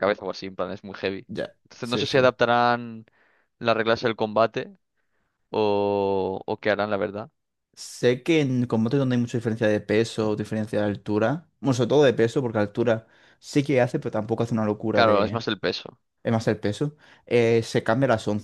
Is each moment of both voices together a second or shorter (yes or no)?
yes